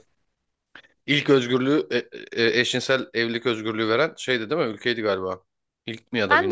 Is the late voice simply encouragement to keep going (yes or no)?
no